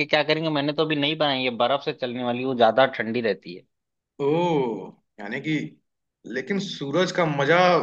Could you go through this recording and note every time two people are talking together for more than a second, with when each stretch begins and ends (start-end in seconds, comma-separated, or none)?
none